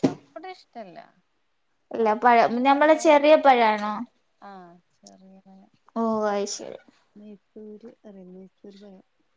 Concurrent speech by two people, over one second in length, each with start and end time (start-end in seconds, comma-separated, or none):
2.0-3.9